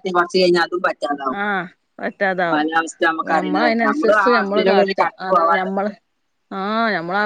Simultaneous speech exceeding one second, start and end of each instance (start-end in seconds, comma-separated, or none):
3.4-5.8